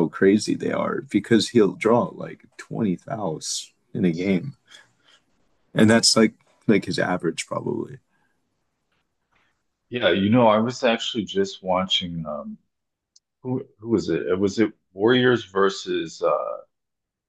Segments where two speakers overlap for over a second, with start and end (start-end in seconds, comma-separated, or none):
none